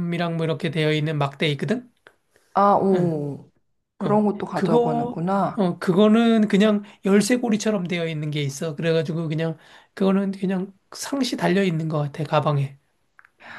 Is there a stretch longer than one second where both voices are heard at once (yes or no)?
yes